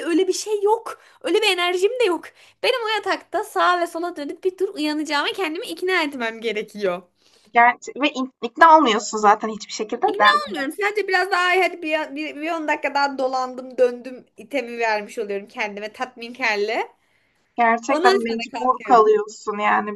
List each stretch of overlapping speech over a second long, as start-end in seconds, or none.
17.9-19.2